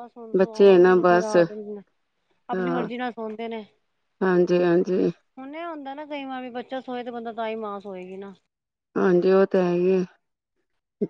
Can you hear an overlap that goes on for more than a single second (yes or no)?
no